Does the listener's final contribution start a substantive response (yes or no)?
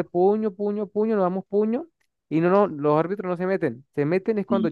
no